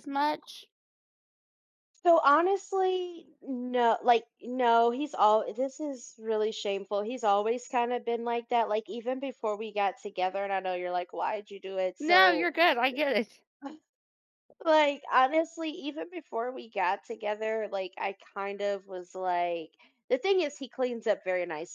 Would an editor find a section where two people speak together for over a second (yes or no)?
no